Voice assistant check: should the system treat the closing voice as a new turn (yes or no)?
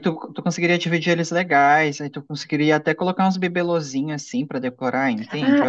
yes